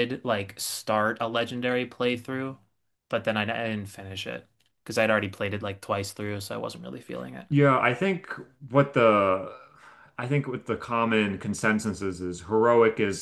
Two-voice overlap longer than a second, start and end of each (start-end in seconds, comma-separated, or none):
none